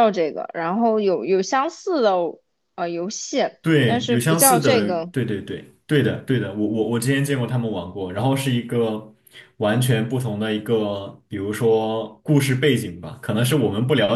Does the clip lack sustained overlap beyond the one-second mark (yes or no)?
no